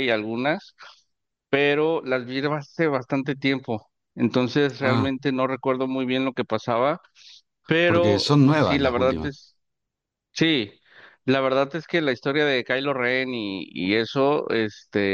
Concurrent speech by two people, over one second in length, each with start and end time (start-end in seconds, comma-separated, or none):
7.8-9.3